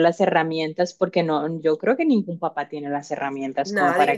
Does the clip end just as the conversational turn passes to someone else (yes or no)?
no